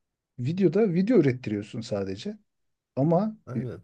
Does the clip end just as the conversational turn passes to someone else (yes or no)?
no